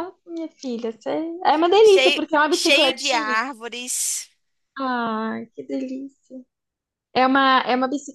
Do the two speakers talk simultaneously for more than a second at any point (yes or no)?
yes